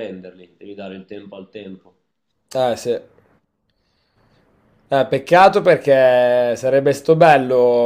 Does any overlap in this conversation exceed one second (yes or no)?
no